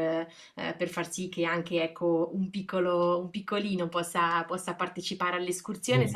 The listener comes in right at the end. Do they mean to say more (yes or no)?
no